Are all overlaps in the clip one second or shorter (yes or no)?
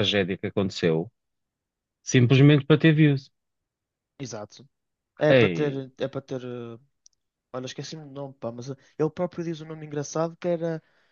yes